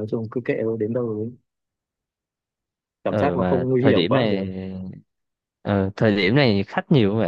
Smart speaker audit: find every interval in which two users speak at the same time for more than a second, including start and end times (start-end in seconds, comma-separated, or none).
3.1-4.4